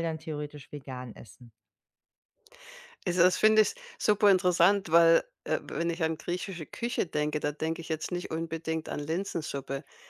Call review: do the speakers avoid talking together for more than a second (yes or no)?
yes